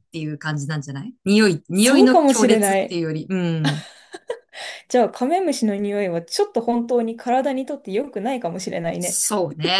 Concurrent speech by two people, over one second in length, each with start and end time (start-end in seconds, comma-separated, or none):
1.7-3.0